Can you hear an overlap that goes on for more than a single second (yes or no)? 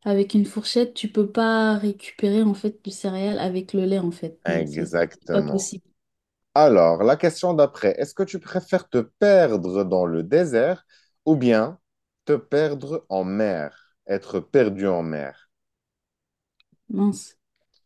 yes